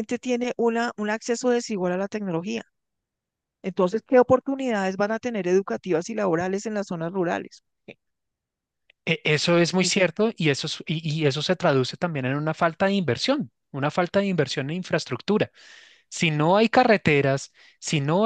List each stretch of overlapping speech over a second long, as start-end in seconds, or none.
none